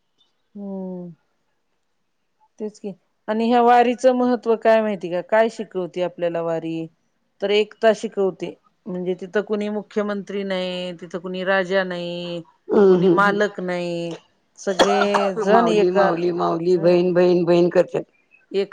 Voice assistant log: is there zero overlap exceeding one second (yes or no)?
no